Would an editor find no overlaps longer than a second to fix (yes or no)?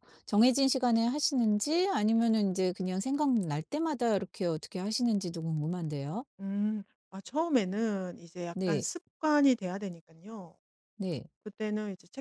yes